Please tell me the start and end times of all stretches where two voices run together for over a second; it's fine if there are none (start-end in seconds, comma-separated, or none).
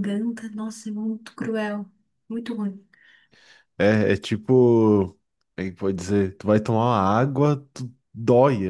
none